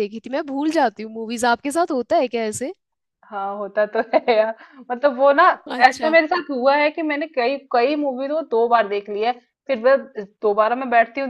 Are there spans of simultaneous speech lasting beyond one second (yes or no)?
no